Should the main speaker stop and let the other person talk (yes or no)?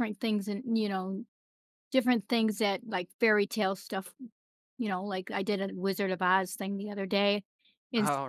no